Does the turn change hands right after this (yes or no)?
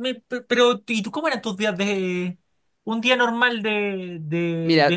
yes